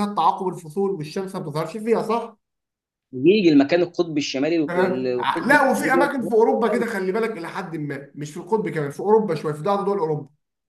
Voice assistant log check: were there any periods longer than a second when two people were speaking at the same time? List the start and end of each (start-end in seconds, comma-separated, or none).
4.7-6.1